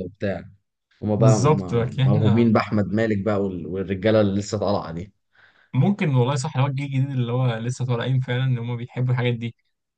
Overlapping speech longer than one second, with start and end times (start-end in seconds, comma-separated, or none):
1.1-2.5